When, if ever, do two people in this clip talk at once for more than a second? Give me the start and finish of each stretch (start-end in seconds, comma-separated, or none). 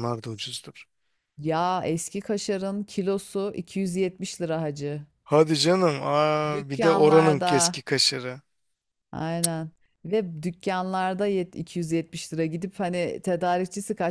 6.5-7.8